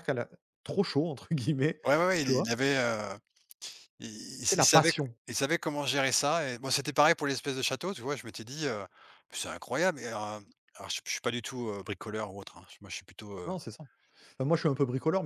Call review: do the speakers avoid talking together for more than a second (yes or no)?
yes